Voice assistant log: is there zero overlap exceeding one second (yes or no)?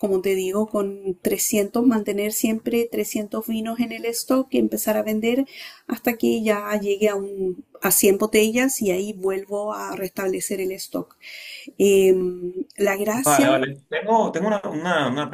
yes